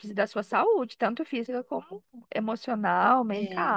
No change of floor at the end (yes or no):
no